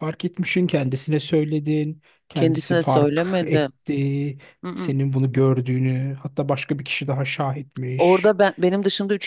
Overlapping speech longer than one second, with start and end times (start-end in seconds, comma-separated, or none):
2.3-3.7